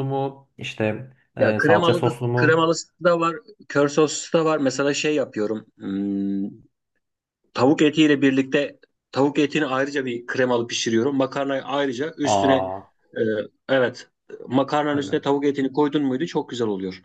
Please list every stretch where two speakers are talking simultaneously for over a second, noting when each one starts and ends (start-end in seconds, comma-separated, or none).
1.3-2.7